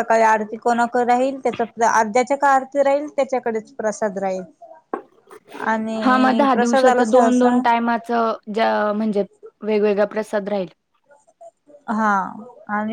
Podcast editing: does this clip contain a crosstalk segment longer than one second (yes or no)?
yes